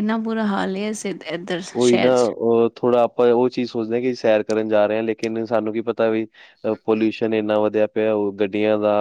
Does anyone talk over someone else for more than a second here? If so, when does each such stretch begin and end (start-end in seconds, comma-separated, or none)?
none